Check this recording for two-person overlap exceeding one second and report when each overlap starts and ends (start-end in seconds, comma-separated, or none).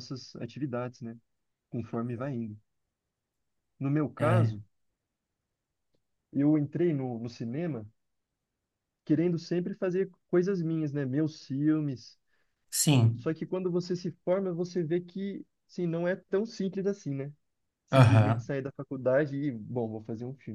none